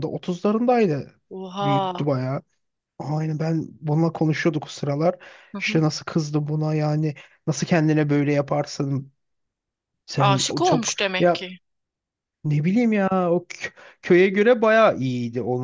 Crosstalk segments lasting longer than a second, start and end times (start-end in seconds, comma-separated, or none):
10.2-11.4